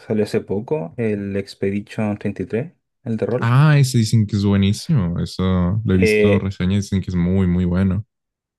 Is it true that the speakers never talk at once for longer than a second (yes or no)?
yes